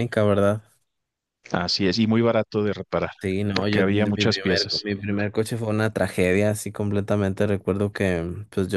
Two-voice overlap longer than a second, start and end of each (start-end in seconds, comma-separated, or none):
3.5-4.9